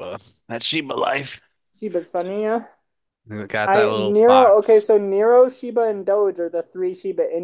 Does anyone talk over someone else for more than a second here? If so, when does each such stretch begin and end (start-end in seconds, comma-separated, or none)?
3.7-4.9